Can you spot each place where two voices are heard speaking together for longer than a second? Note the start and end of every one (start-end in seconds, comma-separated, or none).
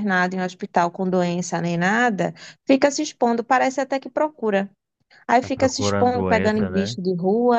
5.4-7.0